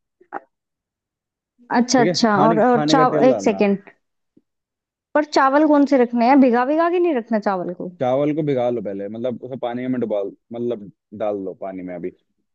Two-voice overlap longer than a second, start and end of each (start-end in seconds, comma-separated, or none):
2.0-3.6